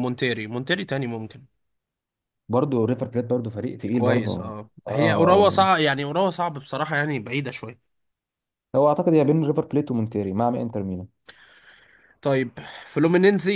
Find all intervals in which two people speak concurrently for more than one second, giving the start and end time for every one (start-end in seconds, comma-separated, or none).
3.9-5.4